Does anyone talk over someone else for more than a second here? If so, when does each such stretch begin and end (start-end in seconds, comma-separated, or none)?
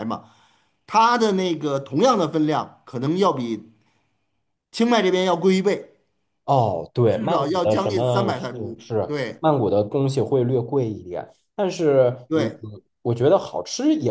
7.1-9.4